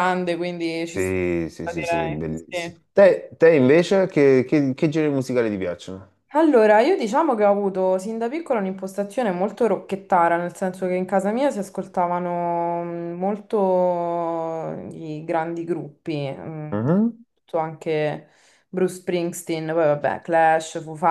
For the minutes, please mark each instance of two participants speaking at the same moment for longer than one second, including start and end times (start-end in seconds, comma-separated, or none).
0.9-2.9